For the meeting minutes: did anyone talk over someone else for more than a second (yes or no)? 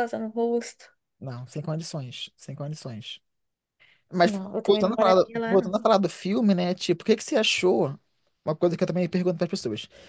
yes